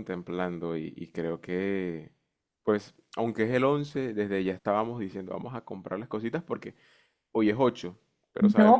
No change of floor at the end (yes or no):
no